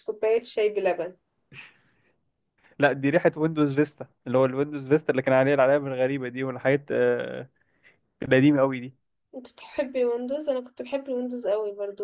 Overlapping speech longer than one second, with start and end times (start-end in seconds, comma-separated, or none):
none